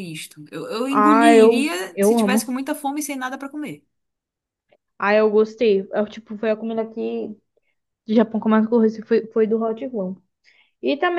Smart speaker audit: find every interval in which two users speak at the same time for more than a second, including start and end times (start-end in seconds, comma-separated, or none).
0.9-2.5